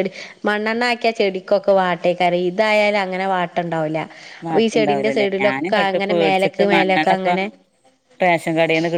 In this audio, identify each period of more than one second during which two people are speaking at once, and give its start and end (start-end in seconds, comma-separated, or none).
4.5-7.3